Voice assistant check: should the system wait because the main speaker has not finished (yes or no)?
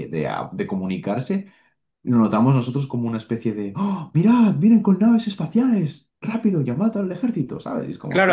no